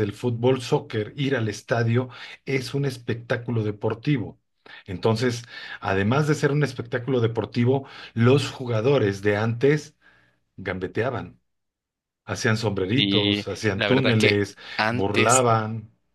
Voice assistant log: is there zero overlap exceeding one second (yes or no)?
no